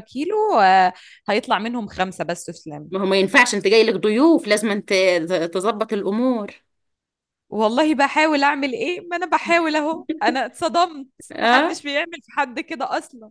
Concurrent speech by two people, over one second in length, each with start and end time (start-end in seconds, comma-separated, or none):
none